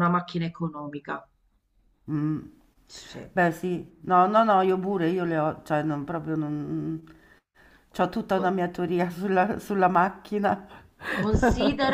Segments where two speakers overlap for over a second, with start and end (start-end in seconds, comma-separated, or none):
none